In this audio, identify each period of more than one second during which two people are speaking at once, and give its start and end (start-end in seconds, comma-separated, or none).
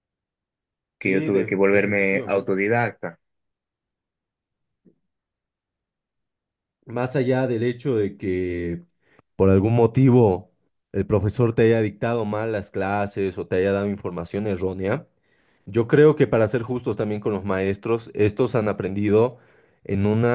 1.0-2.5